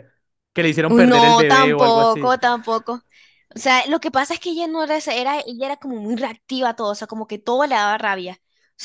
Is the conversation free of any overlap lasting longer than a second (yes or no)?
no